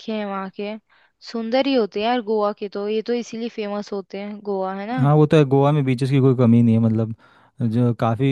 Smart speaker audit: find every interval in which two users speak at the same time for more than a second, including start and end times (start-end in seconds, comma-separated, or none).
none